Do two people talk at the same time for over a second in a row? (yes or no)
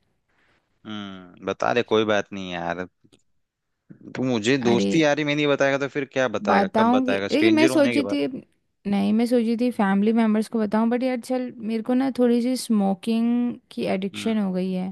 yes